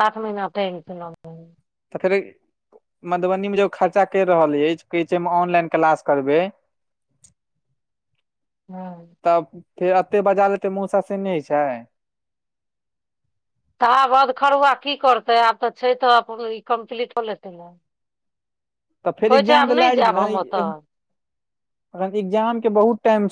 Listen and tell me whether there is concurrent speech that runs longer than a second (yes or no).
no